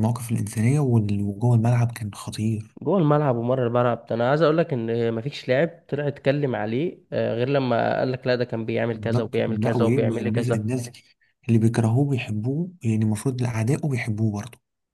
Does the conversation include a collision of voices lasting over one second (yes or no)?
yes